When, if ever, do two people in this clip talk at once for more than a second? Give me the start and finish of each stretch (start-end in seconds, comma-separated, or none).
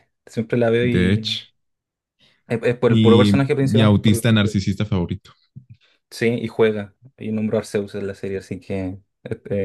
2.9-4.3